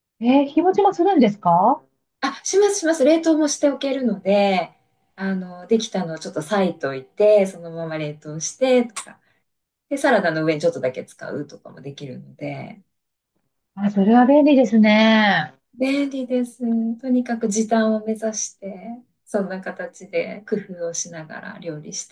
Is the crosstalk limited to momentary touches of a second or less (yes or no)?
yes